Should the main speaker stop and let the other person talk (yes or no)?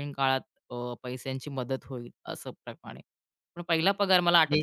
no